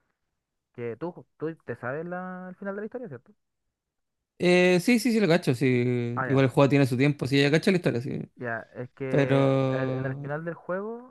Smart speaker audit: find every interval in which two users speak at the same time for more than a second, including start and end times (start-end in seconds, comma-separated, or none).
9.1-10.3